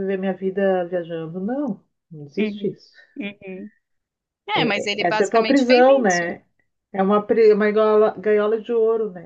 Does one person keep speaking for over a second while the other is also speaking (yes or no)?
yes